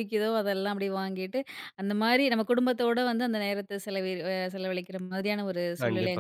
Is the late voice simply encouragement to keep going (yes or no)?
no